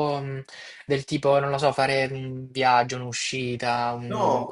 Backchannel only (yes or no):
no